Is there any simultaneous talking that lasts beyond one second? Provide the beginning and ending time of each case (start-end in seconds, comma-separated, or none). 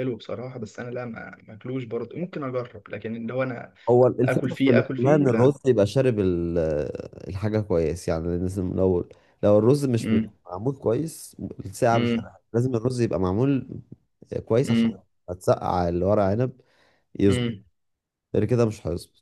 4.2-5.6